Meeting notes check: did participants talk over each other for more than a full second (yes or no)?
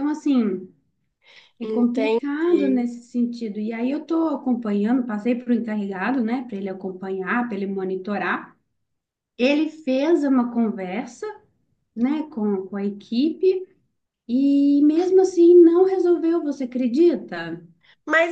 yes